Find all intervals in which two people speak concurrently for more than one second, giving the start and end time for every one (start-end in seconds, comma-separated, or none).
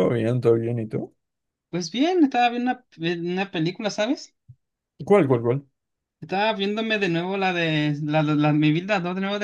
none